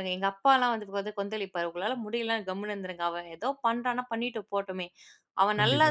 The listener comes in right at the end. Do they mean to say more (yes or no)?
no